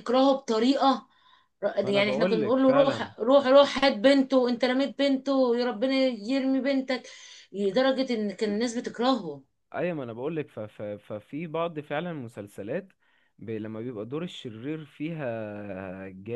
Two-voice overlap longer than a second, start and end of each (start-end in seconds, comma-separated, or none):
1.9-3.1